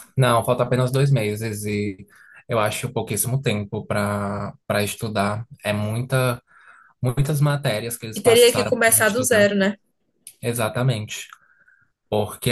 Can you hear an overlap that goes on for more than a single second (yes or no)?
yes